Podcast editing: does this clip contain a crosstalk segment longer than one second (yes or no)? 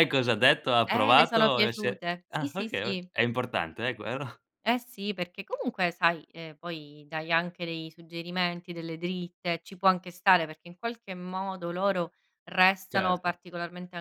yes